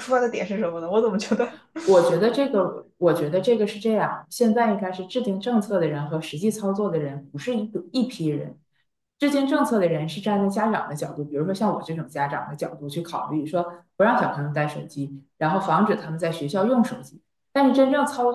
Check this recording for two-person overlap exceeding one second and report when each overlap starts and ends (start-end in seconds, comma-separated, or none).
none